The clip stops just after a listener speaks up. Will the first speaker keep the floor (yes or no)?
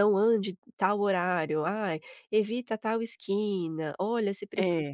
yes